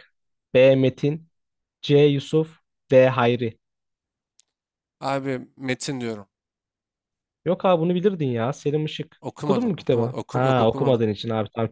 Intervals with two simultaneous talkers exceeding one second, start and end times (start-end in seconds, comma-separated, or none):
9.2-11.0